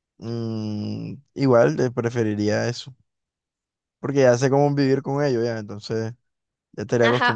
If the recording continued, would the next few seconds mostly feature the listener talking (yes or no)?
yes